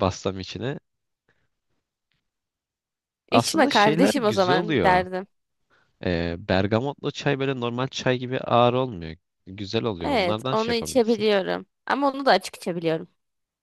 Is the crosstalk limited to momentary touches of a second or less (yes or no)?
no